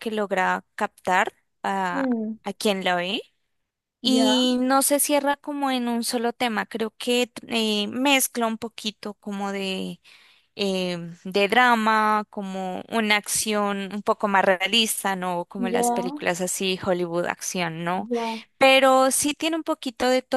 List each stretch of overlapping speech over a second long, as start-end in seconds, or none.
none